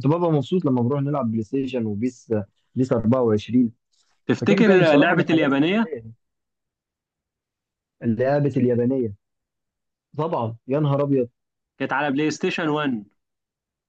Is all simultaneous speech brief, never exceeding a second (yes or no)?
no